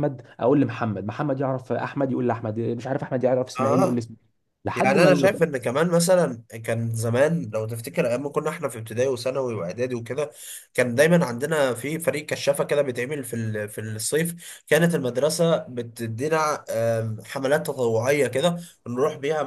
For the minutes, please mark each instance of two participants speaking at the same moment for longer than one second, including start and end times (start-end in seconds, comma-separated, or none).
none